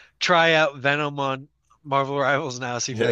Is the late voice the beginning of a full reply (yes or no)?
yes